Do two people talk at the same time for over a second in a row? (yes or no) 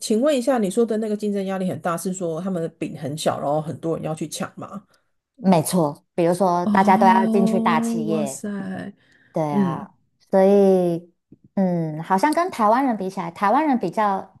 yes